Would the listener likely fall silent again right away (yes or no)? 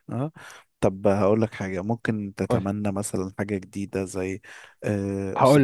yes